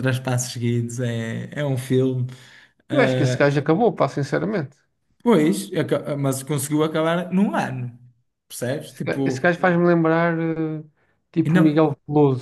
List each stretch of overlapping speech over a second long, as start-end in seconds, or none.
none